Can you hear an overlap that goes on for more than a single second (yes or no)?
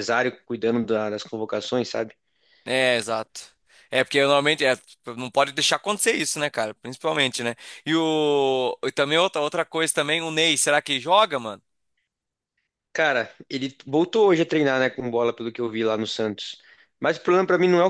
no